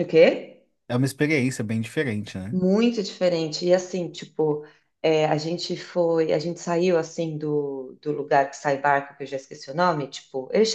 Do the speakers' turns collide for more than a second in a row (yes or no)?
no